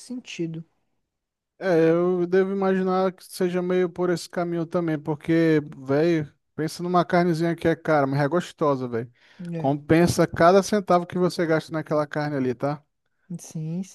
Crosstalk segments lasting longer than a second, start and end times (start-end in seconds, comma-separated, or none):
none